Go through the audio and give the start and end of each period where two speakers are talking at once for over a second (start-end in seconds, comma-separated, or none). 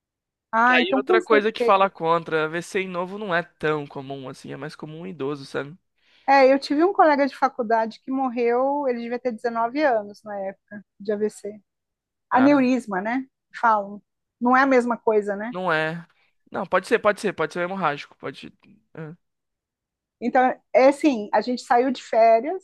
0.6-1.9